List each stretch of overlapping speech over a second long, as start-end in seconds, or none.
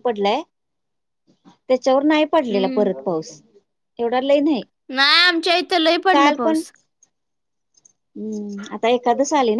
none